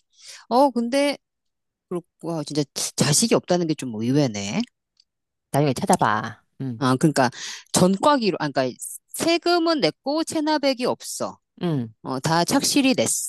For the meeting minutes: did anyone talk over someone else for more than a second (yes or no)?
no